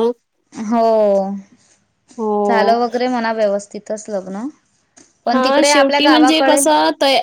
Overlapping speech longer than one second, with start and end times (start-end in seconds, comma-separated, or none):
5.3-6.6